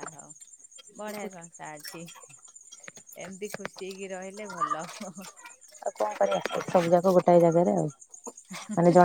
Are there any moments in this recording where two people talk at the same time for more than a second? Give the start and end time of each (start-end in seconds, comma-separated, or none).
none